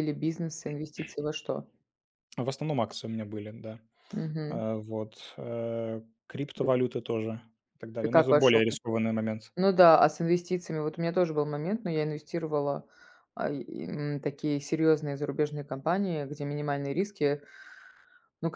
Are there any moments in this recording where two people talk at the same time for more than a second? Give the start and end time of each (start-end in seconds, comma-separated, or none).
none